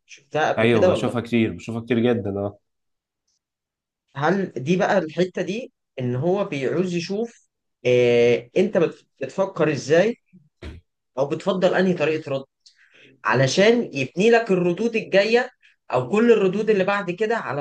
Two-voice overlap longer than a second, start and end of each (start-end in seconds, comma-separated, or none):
none